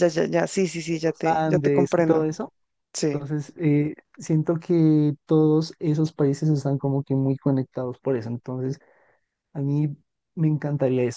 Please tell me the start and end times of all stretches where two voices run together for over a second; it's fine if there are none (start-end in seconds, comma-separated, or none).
0.9-2.3